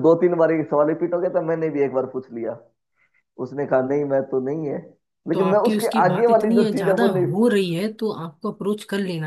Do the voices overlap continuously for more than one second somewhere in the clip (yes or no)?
yes